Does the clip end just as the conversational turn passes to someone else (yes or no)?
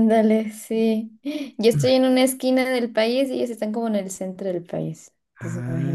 yes